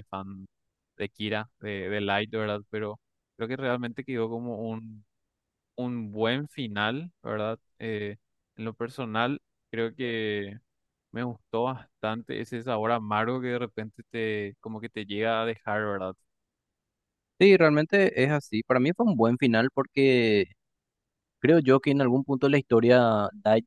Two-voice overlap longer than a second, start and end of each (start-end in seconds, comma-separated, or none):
none